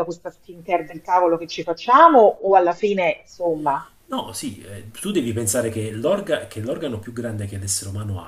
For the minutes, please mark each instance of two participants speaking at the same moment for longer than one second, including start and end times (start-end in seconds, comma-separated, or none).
none